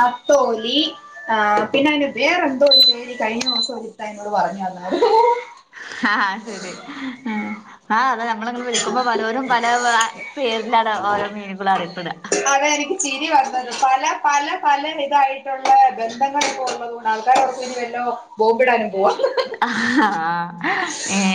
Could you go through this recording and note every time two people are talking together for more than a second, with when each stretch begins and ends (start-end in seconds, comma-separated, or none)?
none